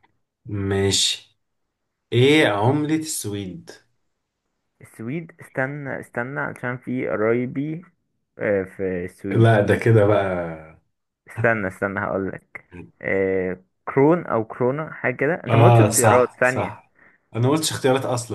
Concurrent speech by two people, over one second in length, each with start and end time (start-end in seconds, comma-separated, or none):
15.5-16.8